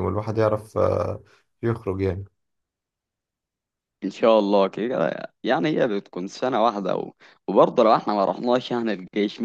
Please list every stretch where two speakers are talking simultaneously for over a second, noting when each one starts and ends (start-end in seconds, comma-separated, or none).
none